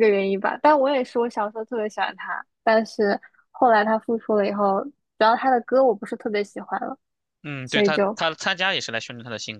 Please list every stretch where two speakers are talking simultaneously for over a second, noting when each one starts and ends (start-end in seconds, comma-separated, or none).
none